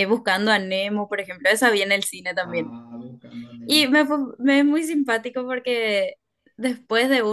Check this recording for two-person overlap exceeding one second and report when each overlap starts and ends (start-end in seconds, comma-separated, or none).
none